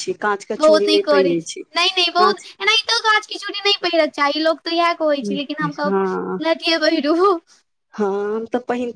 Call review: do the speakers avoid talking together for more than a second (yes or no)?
no